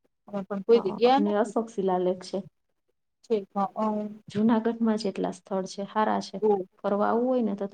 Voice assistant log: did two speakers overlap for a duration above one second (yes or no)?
no